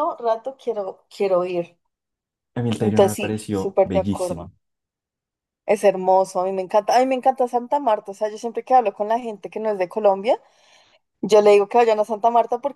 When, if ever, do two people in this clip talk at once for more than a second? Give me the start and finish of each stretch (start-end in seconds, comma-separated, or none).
2.8-4.5